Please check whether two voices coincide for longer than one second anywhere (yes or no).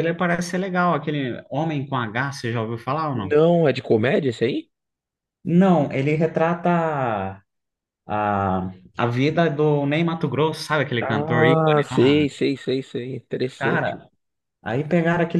yes